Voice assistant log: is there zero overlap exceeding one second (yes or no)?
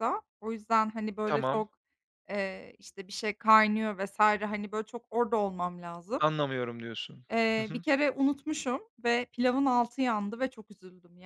yes